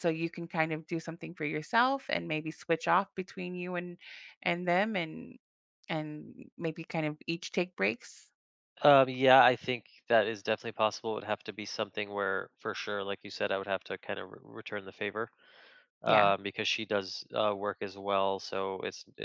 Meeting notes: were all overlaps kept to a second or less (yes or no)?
yes